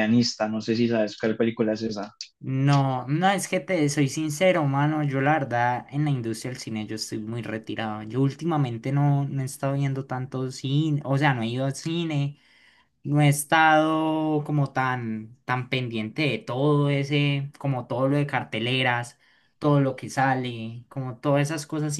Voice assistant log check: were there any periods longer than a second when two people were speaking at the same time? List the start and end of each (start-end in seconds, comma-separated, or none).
none